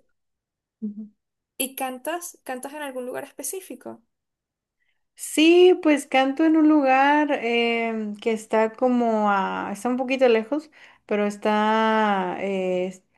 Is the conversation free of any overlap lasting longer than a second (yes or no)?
yes